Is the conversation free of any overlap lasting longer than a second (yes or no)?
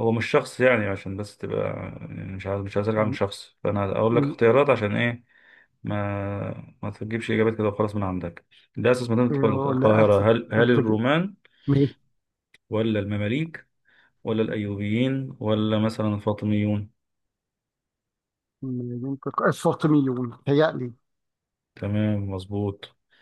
no